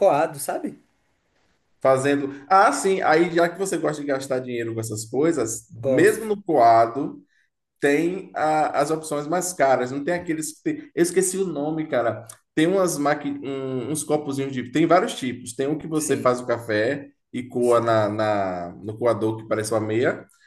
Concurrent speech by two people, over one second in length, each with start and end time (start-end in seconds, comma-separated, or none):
none